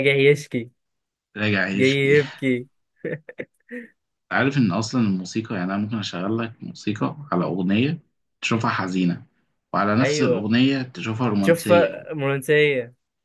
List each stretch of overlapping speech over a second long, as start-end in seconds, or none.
none